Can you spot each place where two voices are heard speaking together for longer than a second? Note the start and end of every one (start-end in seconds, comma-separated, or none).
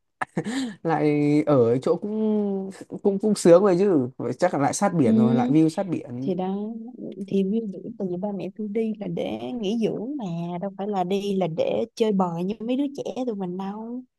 none